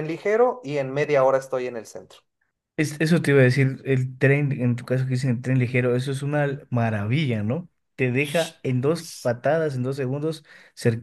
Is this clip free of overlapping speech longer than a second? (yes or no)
yes